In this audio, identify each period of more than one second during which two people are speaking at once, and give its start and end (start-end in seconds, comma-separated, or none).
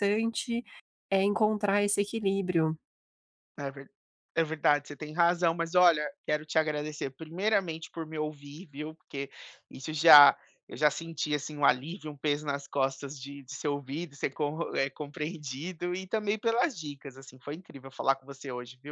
none